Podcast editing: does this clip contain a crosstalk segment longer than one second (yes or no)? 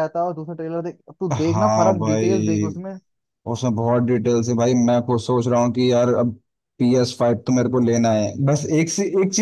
yes